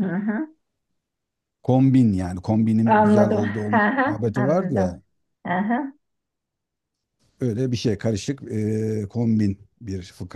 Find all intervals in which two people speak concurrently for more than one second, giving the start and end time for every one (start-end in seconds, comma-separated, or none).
2.8-5.0